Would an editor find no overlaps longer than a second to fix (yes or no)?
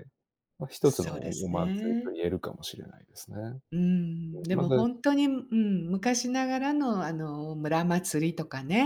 no